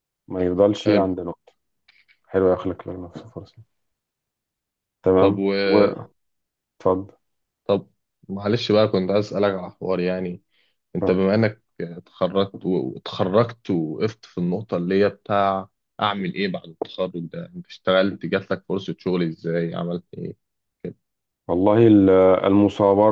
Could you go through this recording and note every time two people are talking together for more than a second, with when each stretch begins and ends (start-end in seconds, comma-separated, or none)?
none